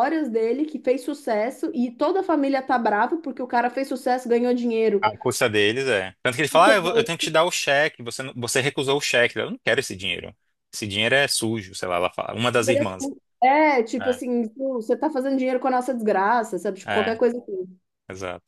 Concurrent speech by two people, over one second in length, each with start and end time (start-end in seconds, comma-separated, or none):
none